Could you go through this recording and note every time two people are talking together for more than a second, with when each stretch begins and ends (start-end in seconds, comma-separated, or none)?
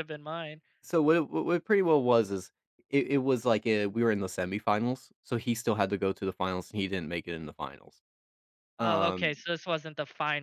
none